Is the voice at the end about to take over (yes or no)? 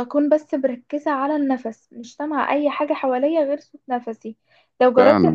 no